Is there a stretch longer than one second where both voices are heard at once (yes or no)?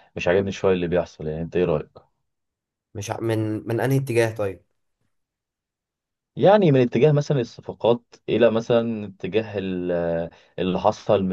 no